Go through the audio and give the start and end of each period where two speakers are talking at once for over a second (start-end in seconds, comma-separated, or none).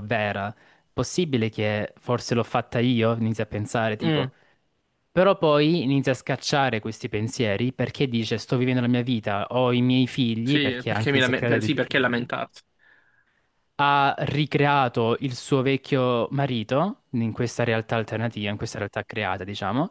10.4-12.2